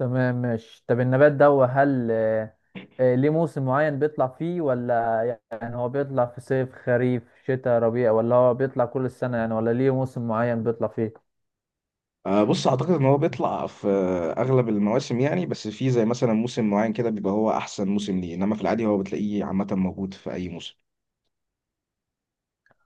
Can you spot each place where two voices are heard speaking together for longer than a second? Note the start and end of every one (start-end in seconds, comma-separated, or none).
none